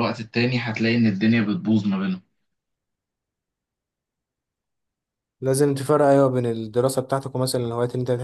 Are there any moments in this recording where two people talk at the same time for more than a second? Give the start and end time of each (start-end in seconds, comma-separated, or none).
none